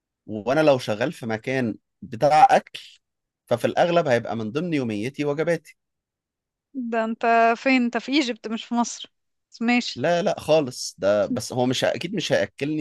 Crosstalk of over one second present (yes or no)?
no